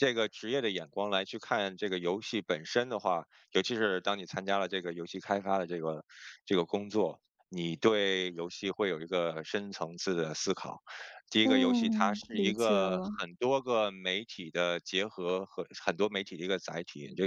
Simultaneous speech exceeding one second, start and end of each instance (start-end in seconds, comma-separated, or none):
11.4-13.1